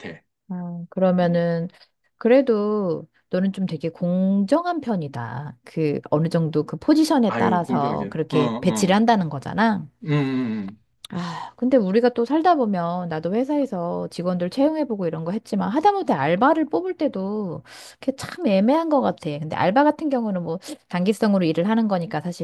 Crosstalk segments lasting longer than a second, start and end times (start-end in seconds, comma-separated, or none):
7.3-9.0